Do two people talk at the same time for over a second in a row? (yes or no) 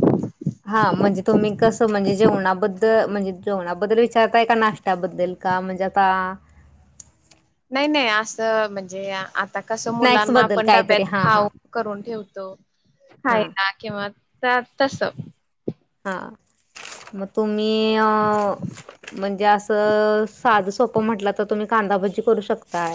yes